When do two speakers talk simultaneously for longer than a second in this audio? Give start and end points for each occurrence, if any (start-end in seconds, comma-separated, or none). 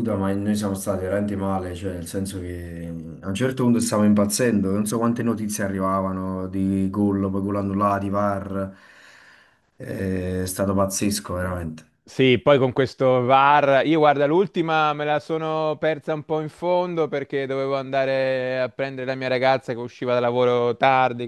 none